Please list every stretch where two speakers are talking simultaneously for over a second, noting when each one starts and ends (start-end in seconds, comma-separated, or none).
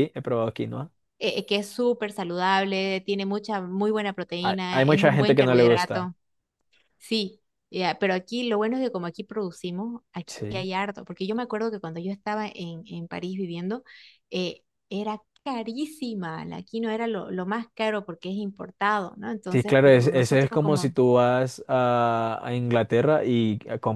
4.4-6.1, 19.5-20.9